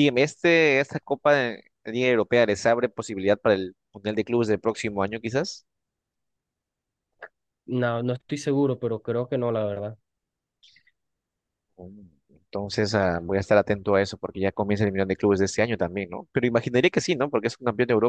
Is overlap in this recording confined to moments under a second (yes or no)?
yes